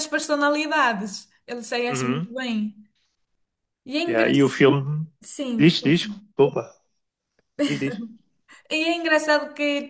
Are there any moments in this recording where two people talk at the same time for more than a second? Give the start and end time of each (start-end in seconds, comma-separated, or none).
none